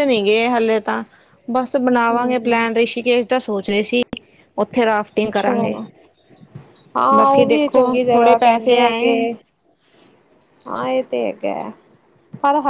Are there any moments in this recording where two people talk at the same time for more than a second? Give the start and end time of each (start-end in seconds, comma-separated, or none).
7.2-9.1